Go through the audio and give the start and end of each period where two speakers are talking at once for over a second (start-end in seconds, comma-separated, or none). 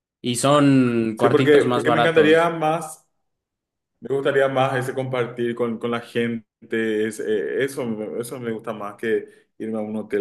1.1-2.5